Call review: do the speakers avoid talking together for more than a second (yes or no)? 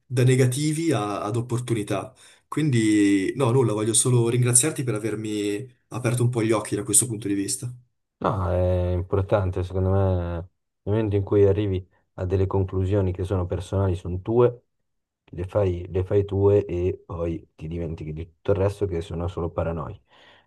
yes